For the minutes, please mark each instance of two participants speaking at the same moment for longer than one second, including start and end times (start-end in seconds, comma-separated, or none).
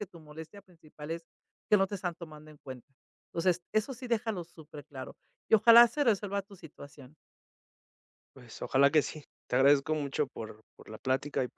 none